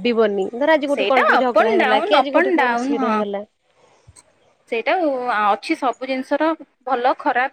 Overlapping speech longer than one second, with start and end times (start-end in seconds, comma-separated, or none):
0.9-3.1